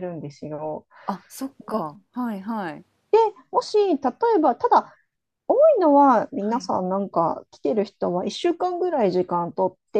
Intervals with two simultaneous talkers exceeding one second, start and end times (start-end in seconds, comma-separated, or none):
none